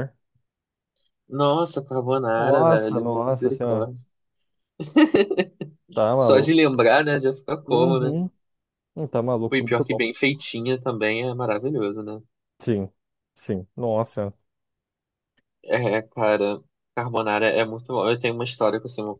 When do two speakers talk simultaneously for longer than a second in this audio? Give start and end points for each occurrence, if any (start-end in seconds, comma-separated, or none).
2.4-3.9